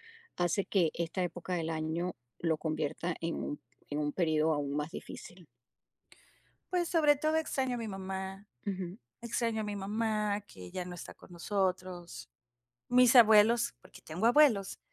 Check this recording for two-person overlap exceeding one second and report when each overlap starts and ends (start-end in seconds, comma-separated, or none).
none